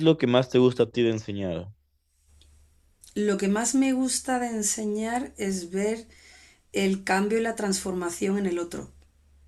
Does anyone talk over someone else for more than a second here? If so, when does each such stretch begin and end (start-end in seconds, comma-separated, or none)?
none